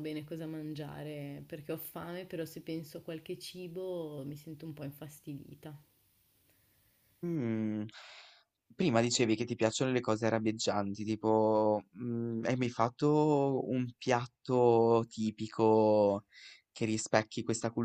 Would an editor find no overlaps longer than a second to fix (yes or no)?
yes